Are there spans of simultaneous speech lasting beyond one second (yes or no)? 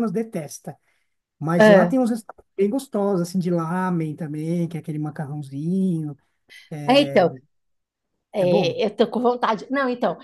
no